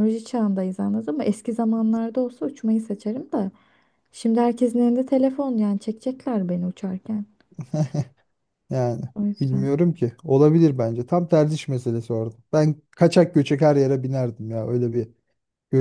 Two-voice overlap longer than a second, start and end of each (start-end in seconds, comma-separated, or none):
none